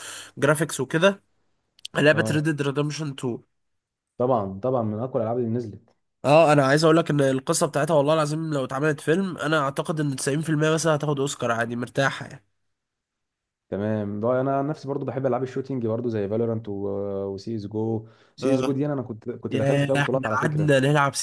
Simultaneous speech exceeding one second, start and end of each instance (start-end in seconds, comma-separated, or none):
19.5-20.7